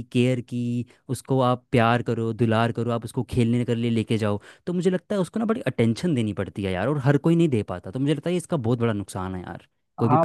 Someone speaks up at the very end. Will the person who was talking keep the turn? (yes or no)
no